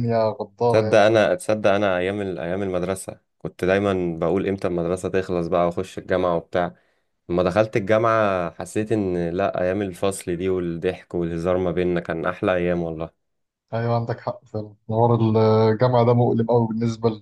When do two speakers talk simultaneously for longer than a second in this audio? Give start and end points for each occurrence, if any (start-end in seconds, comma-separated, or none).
none